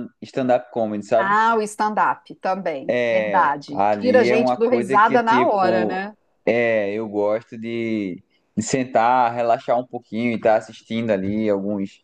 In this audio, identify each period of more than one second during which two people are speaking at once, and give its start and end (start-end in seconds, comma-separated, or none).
2.9-6.0